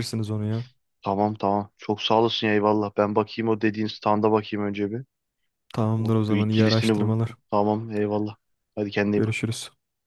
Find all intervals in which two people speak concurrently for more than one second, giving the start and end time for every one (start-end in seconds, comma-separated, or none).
6.0-7.3